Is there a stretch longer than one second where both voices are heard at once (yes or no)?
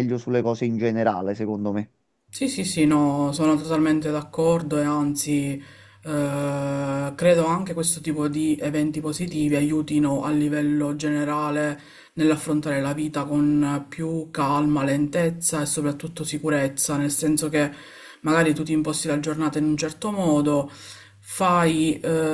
no